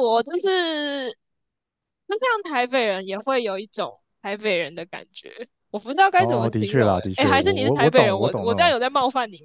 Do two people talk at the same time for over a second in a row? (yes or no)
yes